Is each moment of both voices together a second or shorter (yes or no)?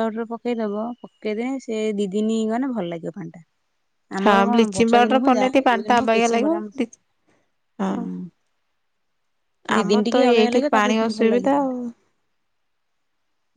no